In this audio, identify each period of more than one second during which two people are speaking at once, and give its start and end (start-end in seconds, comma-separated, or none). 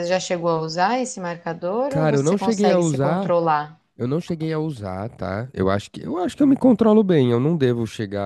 1.9-3.3